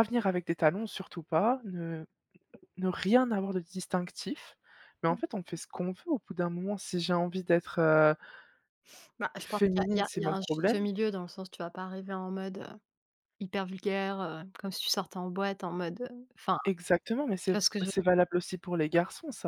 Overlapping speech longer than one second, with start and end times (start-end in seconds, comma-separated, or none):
9.4-10.8